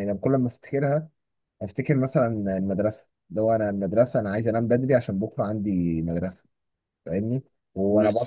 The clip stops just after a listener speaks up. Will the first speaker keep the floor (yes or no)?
yes